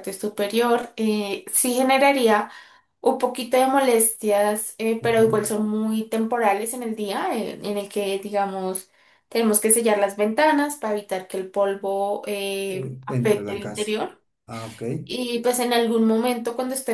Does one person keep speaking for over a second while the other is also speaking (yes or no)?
yes